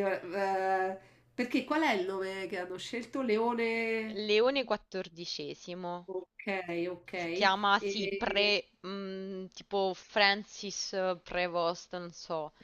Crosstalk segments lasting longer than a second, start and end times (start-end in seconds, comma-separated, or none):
7.1-8.5